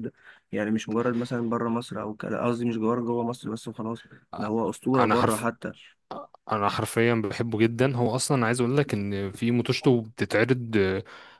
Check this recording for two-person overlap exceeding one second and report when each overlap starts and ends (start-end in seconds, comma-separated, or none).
none